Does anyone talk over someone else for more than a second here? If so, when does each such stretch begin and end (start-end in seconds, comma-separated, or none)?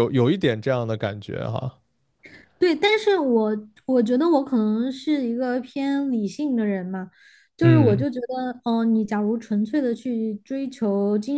none